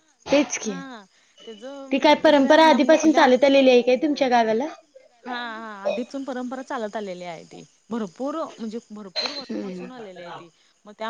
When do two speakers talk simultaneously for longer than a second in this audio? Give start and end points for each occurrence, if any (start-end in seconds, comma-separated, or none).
1.9-3.2